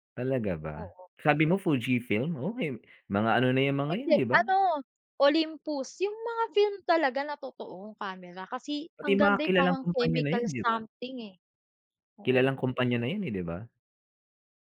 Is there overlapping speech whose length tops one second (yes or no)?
yes